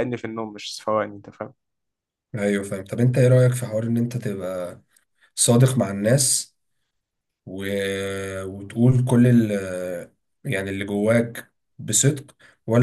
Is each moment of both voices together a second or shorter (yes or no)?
yes